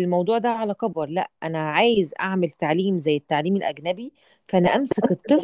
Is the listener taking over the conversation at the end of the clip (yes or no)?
no